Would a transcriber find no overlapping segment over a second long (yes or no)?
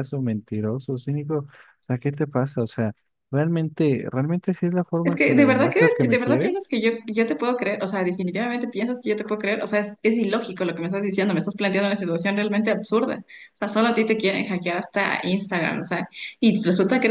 no